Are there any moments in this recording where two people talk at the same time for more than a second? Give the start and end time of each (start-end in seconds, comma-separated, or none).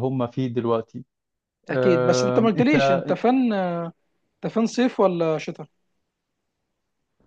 1.7-3.0